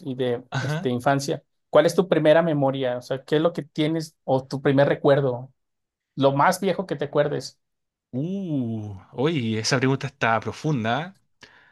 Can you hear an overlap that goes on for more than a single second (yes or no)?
no